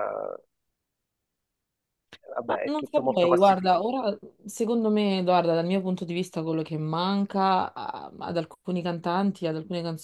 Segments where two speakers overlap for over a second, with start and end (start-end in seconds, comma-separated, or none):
2.4-3.8